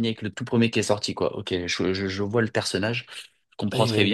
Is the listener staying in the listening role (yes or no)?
yes